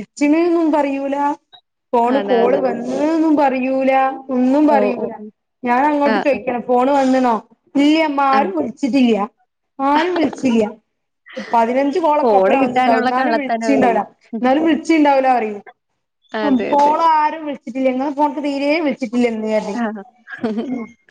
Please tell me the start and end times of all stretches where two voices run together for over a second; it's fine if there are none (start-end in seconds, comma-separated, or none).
12.2-13.9